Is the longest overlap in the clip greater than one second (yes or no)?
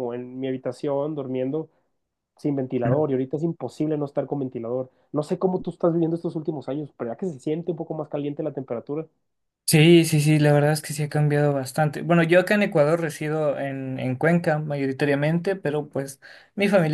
no